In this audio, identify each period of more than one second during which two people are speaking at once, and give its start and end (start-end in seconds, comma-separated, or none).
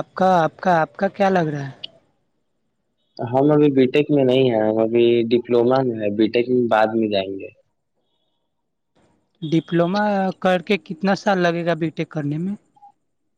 none